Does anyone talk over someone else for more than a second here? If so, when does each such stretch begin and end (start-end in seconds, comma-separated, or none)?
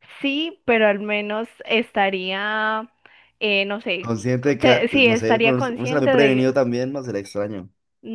4.0-6.4